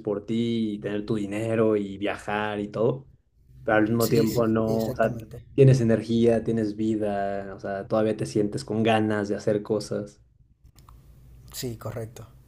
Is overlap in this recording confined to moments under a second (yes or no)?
no